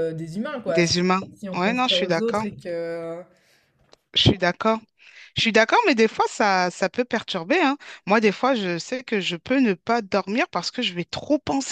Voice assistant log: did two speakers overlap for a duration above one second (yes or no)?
yes